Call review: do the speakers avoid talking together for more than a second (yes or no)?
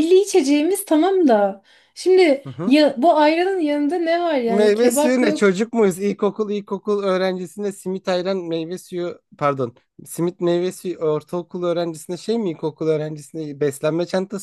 no